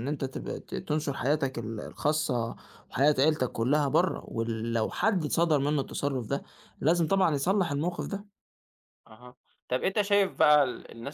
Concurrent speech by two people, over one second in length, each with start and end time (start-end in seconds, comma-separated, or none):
none